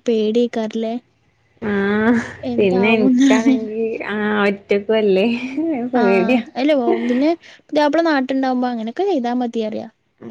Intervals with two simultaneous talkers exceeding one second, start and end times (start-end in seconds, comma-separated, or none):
none